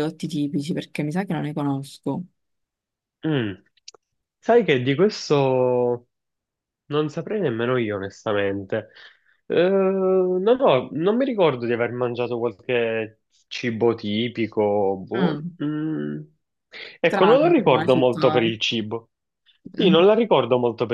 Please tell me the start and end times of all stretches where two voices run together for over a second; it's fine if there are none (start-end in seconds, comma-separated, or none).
17.1-18.5